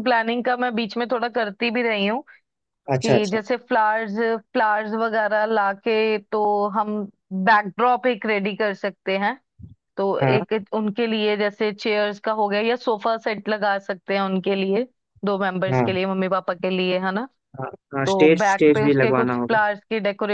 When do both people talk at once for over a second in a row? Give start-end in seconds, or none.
18.1-19.6